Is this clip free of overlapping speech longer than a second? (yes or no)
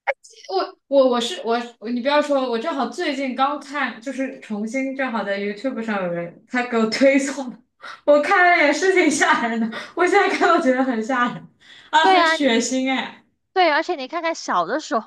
yes